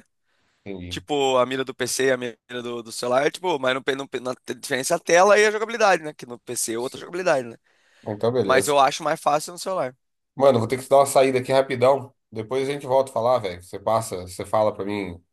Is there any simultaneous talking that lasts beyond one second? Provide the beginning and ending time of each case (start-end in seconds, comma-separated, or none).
none